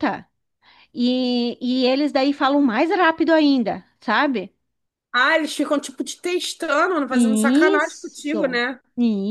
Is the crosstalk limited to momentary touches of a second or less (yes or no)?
no